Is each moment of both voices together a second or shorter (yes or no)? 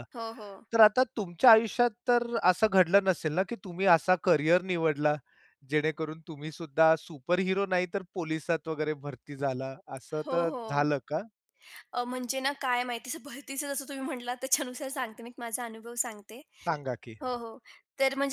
yes